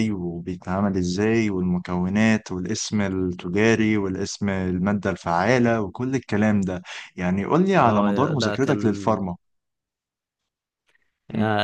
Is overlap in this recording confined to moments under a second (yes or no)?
no